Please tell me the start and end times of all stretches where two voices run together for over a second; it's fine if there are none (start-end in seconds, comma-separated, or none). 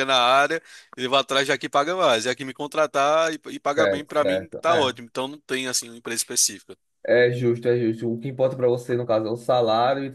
3.7-5.0